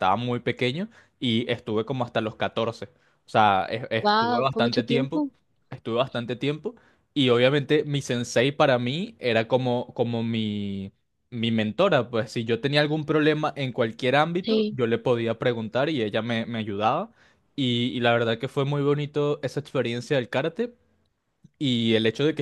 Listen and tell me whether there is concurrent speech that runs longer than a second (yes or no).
yes